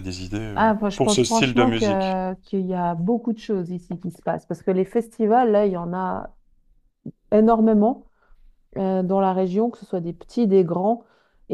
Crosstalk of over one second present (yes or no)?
yes